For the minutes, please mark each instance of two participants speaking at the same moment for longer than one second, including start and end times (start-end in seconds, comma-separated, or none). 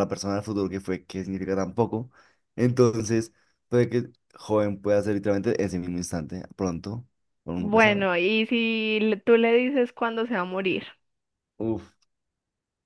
none